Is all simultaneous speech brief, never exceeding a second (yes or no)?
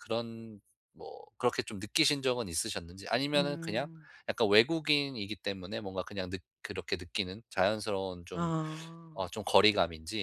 yes